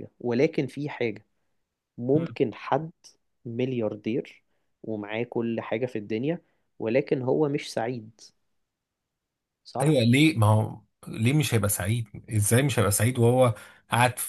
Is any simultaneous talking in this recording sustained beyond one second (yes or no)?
no